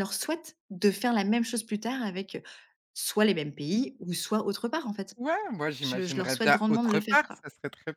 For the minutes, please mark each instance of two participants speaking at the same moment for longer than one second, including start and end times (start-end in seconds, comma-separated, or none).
5.8-7.4